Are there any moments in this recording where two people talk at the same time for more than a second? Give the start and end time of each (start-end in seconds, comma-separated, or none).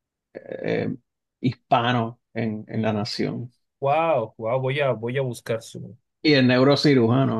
none